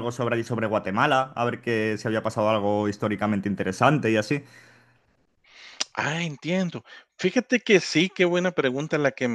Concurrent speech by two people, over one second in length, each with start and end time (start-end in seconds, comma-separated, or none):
none